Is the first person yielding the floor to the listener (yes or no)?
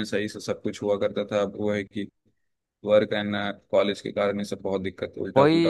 yes